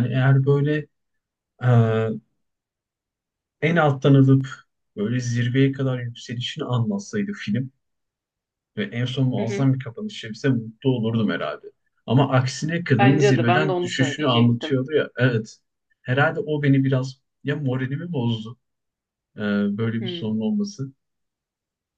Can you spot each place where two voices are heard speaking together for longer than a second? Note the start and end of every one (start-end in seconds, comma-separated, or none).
12.9-14.8